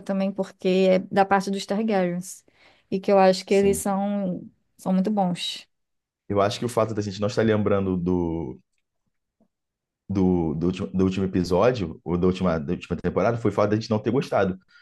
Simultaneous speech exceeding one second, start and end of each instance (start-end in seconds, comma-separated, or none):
none